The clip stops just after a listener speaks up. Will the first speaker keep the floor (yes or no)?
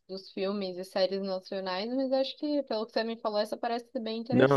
no